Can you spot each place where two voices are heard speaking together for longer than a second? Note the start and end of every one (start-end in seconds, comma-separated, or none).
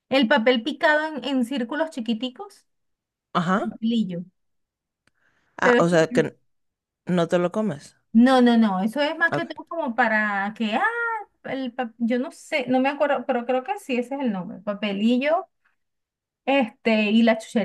none